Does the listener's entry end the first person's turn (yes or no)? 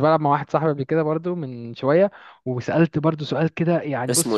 no